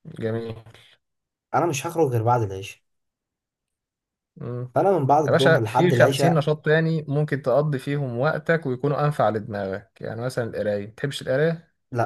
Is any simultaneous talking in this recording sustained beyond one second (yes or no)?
yes